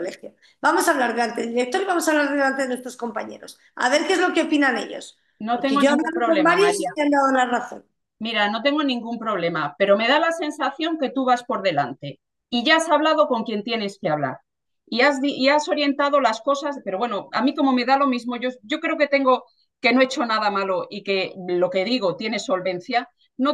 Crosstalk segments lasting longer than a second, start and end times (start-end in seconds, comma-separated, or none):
5.4-6.9